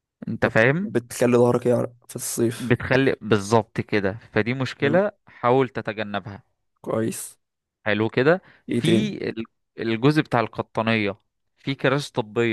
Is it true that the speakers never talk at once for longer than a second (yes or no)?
yes